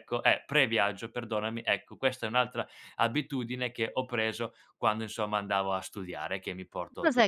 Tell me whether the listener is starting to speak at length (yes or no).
yes